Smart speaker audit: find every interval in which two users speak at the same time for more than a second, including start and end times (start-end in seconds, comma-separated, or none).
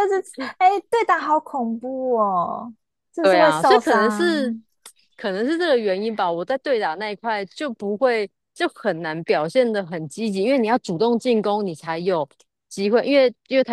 3.2-4.5